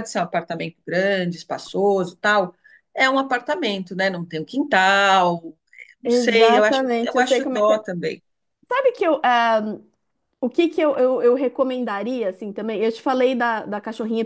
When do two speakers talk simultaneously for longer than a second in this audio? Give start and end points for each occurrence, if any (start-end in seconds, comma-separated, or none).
6.0-7.8